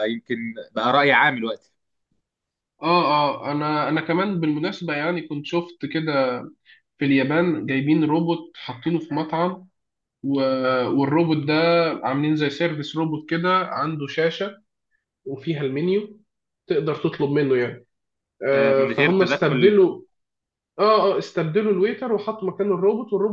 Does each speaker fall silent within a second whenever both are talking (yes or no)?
no